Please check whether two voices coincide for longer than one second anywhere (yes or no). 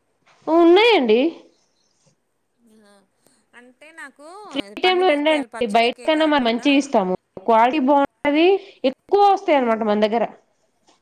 yes